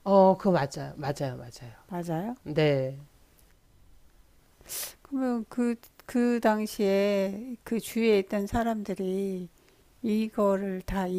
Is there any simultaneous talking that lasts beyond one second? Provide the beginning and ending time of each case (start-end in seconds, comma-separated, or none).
none